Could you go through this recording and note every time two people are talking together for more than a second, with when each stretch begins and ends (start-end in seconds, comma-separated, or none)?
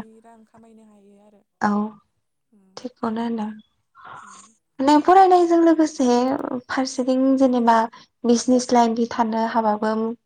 none